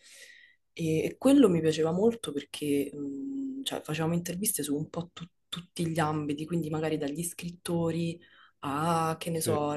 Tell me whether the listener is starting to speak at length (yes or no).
no